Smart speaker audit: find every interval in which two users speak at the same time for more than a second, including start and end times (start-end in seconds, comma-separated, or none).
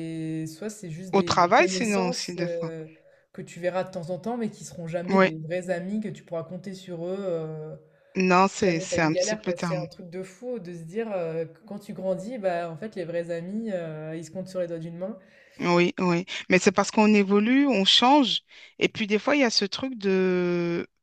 1.1-2.7, 8.5-9.9